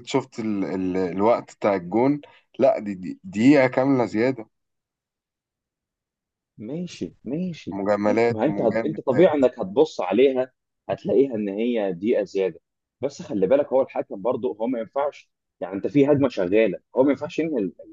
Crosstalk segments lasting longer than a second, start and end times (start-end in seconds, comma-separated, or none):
7.7-9.4